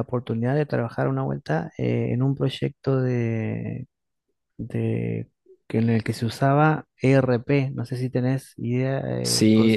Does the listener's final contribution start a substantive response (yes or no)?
yes